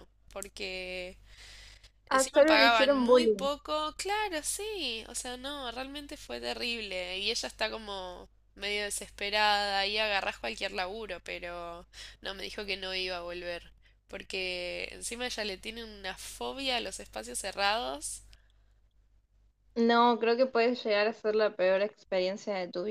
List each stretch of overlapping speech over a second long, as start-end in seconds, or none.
2.1-3.5